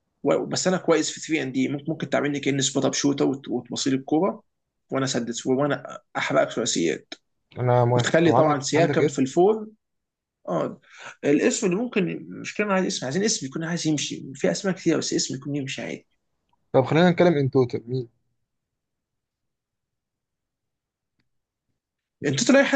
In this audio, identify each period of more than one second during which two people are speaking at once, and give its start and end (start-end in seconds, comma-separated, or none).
8.0-9.2